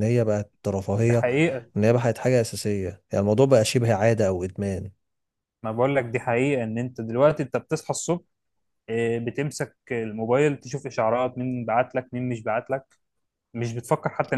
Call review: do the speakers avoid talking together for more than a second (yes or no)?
yes